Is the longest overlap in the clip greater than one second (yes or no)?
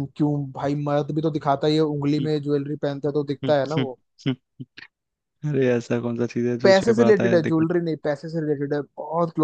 yes